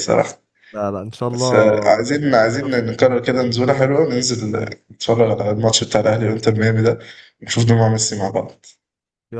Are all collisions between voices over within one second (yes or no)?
no